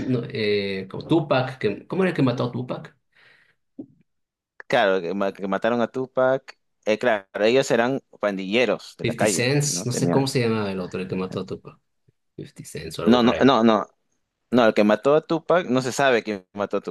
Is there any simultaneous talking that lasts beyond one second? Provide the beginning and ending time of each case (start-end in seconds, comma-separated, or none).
9.0-10.3